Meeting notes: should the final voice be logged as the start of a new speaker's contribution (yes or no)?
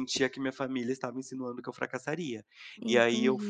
no